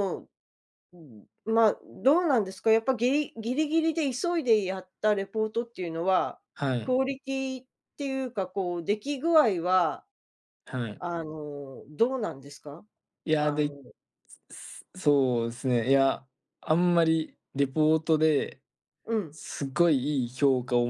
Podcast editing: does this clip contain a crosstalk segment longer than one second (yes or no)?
no